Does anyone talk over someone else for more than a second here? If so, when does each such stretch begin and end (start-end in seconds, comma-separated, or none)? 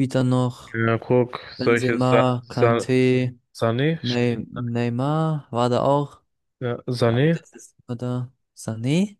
1.6-2.8